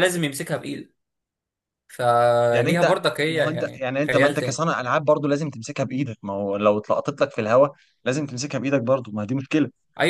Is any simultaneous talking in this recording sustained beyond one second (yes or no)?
yes